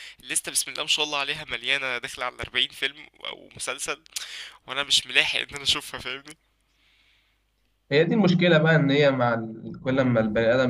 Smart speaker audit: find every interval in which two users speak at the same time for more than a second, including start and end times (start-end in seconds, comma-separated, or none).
none